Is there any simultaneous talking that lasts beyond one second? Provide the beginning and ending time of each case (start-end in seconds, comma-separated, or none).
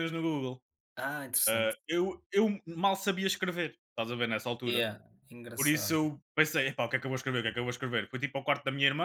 none